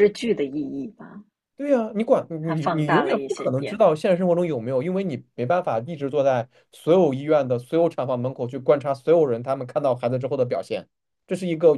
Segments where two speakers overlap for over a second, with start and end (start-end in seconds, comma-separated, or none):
2.4-3.9